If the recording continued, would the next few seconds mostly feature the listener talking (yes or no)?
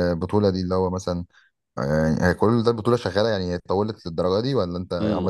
yes